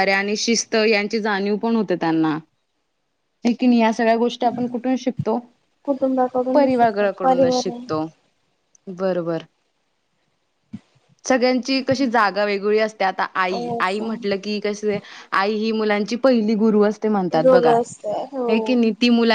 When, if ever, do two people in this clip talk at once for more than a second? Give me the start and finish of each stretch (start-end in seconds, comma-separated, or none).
6.5-8.1